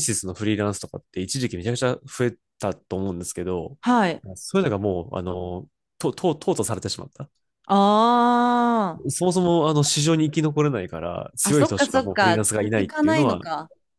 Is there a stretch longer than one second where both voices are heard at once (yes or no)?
yes